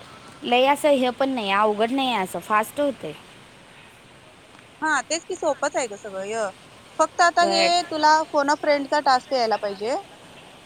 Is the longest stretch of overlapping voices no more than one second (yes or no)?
yes